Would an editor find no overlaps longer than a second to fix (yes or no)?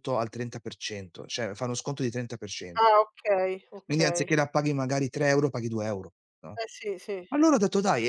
yes